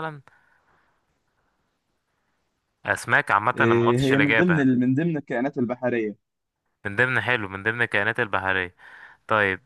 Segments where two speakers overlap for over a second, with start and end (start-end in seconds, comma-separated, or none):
3.5-4.8